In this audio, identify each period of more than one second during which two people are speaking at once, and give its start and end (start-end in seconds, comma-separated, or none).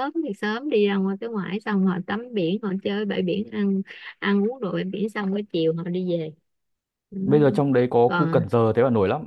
none